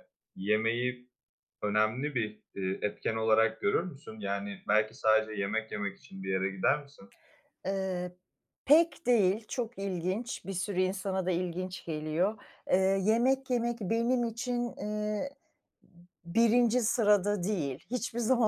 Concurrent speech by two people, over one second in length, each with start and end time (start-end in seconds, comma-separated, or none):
none